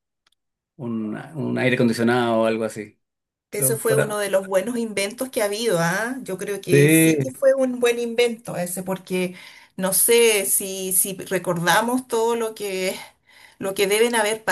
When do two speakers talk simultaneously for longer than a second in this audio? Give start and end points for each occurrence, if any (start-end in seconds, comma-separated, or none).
none